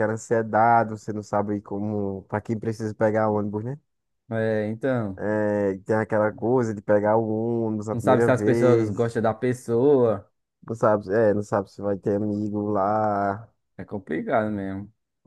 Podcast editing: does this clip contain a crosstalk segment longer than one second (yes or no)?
yes